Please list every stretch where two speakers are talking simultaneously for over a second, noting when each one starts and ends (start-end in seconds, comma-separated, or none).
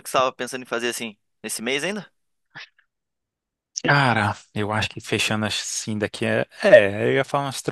none